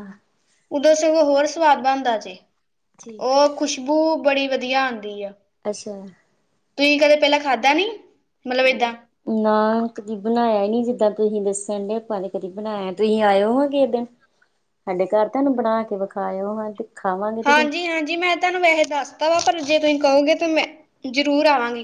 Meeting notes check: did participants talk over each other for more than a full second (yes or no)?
no